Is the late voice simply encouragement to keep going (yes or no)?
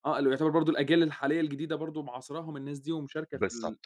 no